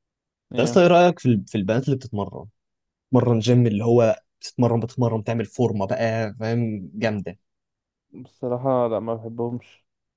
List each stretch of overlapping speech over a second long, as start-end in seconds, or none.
none